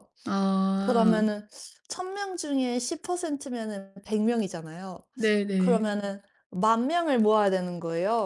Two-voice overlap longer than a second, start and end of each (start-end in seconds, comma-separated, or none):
none